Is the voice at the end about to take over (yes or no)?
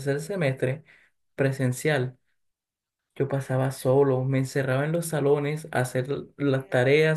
no